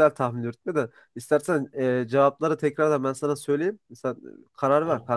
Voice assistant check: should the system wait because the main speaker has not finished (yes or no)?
yes